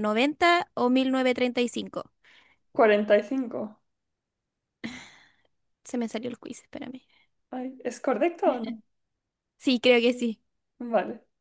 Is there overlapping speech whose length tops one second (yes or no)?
no